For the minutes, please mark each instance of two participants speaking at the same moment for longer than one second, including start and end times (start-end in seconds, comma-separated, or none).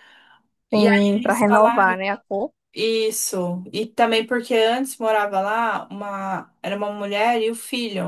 0.7-2.0